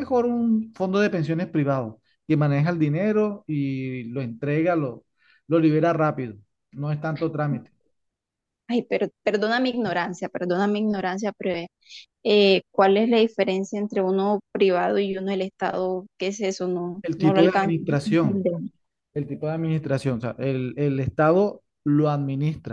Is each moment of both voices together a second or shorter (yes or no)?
no